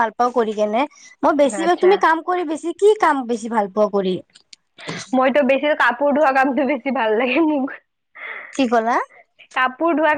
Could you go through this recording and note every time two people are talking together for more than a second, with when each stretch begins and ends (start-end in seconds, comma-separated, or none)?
none